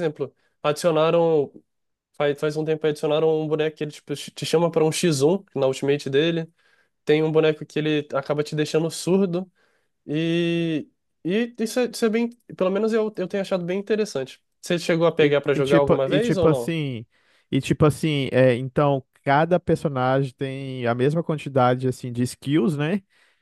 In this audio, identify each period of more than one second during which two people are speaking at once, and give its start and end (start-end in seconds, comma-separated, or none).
15.2-16.8